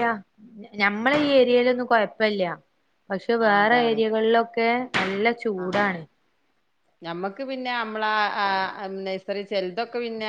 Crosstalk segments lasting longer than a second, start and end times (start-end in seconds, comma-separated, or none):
none